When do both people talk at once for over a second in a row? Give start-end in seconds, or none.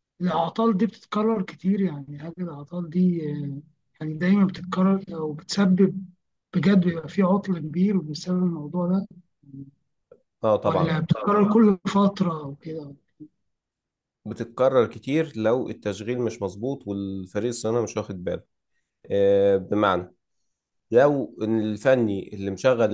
none